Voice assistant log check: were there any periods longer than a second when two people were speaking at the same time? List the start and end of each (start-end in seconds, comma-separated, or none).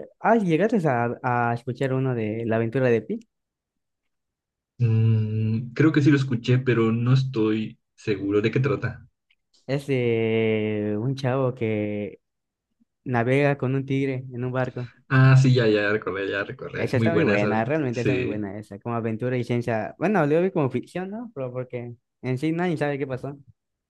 16.8-18.5